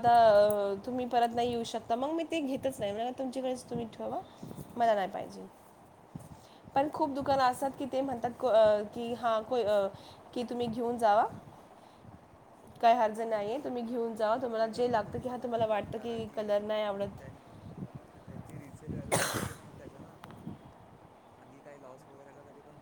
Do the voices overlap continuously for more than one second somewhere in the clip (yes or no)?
yes